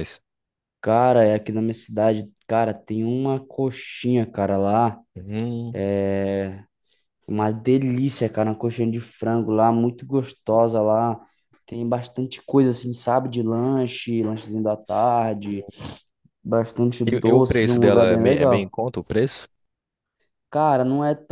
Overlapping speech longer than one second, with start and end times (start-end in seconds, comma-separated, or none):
17.1-18.7